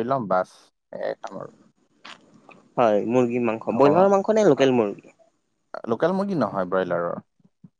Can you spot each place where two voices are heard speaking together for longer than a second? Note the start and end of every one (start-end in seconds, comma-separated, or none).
none